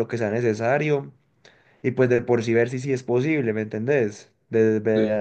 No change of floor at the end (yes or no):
yes